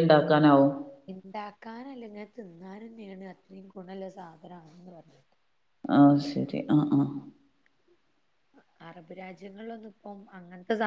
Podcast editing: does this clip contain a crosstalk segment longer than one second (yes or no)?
no